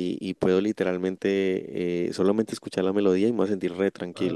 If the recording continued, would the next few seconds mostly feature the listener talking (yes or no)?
no